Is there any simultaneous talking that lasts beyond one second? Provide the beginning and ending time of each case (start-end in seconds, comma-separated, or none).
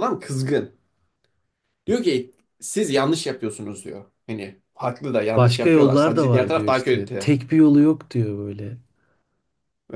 5.3-7.3